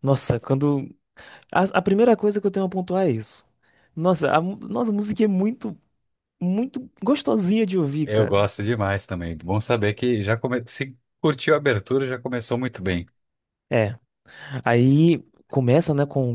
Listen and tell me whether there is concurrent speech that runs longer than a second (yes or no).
no